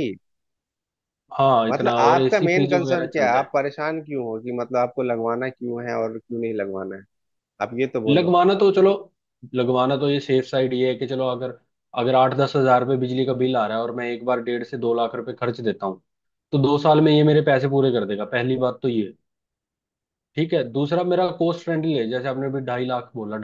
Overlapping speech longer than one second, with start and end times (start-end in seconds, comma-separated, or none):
1.7-3.5